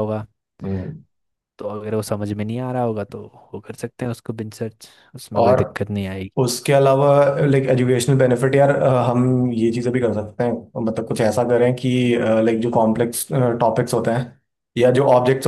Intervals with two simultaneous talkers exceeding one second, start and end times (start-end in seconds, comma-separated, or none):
none